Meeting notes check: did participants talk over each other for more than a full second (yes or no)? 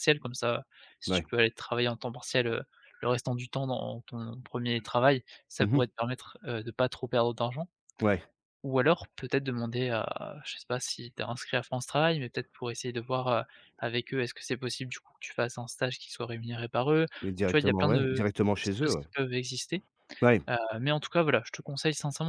yes